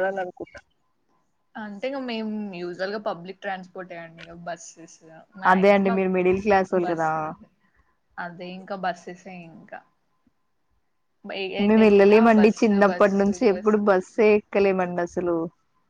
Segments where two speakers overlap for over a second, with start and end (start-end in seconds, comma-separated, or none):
11.7-13.3